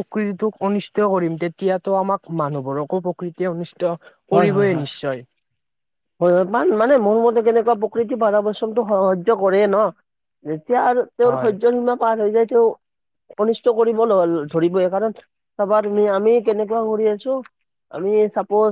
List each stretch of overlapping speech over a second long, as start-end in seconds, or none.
none